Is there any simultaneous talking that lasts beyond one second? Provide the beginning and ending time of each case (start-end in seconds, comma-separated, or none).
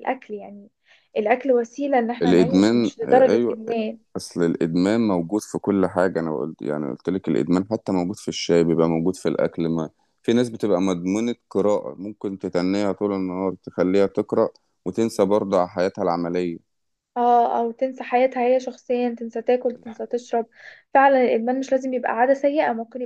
2.2-3.6